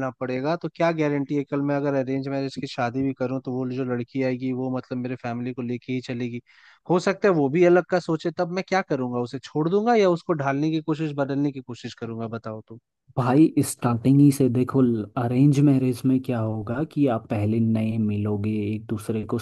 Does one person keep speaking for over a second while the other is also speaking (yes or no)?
no